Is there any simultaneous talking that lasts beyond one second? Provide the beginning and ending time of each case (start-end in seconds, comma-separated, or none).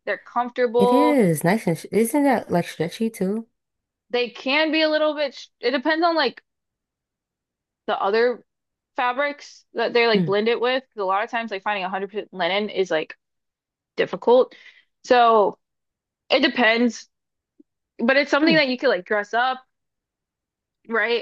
none